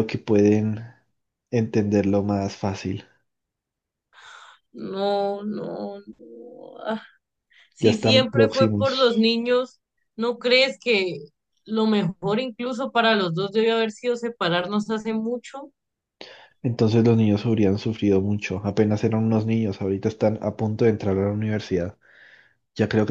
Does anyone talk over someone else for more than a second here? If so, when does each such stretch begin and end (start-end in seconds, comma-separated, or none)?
7.8-9.2